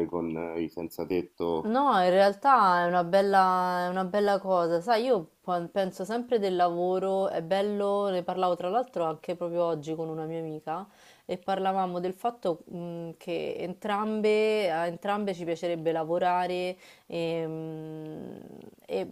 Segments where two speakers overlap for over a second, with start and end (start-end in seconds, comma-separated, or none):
none